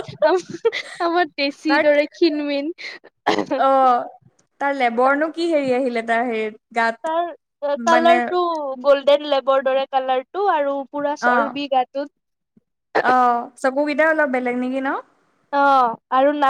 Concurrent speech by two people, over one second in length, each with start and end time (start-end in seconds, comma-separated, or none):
none